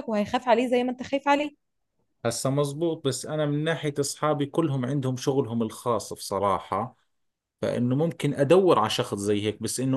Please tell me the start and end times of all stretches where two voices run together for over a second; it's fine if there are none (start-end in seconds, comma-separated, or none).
none